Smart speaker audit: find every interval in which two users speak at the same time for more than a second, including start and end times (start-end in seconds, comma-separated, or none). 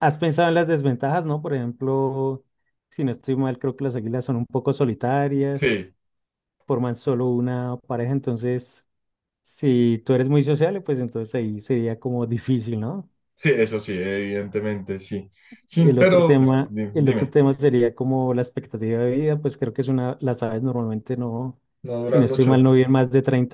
15.8-17.3